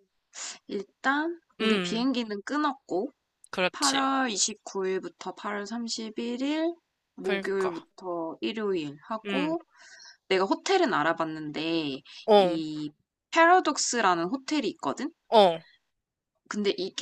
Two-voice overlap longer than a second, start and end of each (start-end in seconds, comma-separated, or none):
none